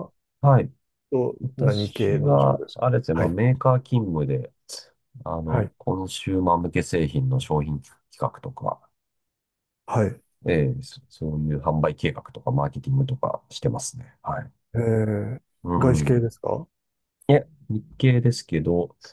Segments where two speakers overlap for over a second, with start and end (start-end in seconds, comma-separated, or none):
1.4-3.4